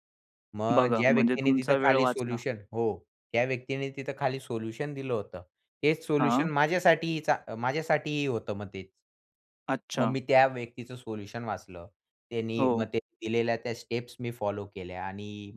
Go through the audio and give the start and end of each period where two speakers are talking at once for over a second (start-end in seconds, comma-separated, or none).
0.7-2.4